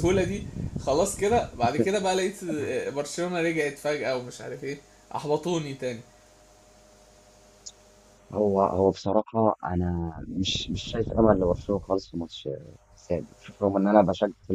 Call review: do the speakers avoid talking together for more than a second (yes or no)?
yes